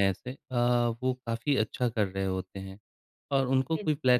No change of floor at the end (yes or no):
yes